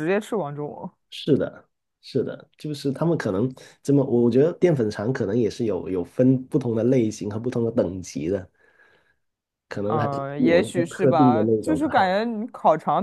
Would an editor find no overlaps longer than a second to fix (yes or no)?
no